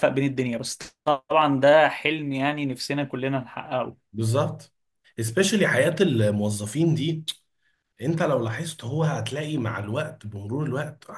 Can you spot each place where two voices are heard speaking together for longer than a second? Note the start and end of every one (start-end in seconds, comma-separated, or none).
none